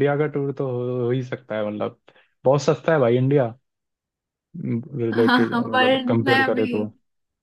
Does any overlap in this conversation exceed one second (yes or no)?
yes